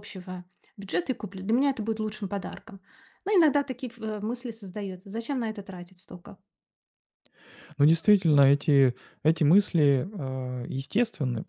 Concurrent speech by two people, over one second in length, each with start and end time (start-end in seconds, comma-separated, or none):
none